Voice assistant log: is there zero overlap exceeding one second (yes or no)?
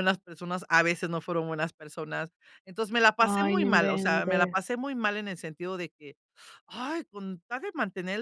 no